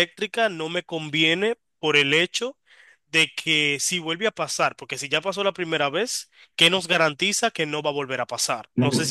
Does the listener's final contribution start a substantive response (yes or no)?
yes